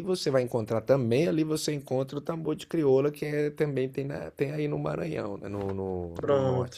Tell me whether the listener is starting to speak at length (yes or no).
no